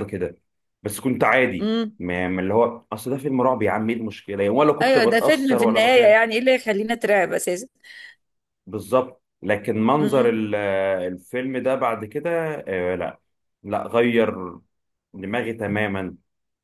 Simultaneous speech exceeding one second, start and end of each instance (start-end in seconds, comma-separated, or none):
4.8-6.1